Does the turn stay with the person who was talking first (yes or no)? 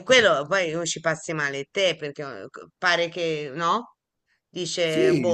yes